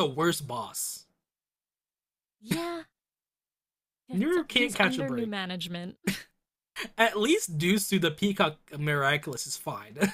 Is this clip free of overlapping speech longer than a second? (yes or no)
no